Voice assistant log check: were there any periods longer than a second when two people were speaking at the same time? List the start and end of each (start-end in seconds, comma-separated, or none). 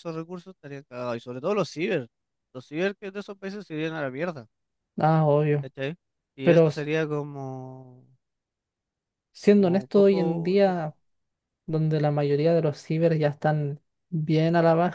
9.6-10.8